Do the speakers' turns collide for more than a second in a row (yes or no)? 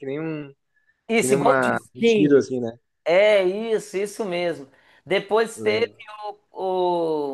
yes